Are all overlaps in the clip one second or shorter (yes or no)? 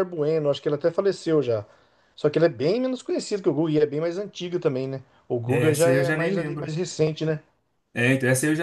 no